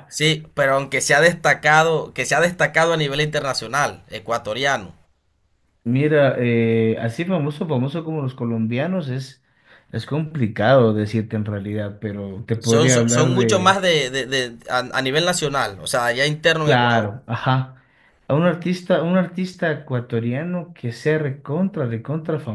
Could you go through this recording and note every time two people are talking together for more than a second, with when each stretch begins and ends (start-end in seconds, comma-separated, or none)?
12.6-13.8